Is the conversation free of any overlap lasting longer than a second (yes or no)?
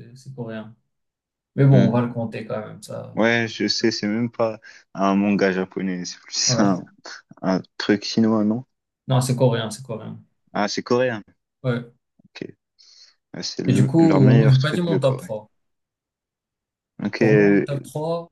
no